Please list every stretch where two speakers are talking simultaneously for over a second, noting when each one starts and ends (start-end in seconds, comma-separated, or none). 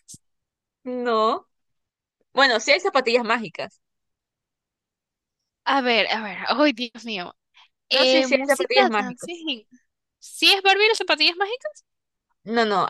7.9-9.4